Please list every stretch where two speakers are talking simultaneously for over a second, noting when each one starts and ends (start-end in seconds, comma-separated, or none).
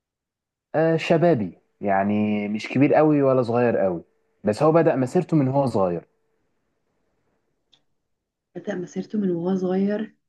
none